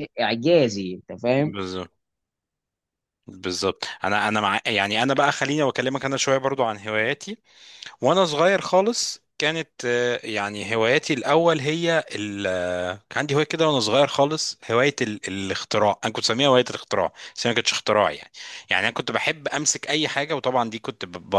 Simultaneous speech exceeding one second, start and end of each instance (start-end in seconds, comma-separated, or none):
none